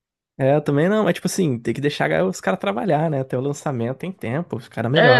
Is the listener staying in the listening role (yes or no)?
no